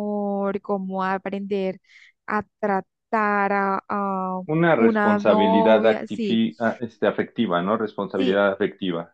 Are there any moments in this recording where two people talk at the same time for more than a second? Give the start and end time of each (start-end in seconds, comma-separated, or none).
4.8-6.4